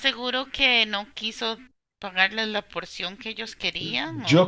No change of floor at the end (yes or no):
no